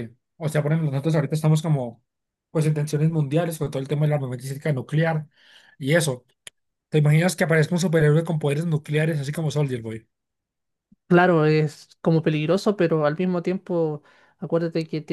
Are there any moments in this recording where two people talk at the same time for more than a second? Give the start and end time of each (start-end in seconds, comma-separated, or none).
none